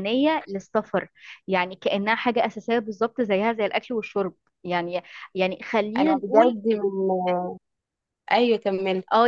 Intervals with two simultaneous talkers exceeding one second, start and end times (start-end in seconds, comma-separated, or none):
none